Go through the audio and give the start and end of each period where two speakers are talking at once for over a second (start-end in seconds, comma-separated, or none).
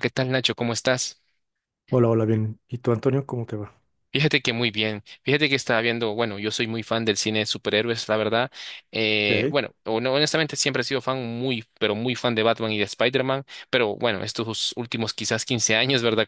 none